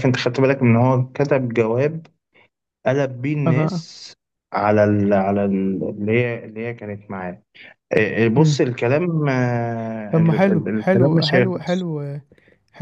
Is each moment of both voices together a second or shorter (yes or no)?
no